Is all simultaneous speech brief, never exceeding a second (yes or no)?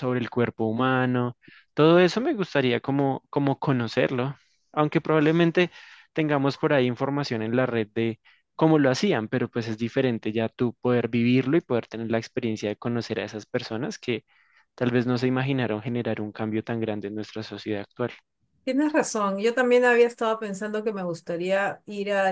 yes